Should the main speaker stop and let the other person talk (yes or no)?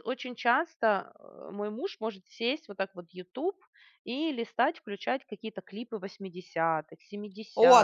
yes